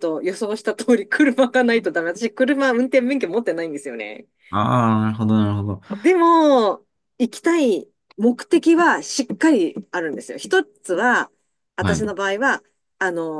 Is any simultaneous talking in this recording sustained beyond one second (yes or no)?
no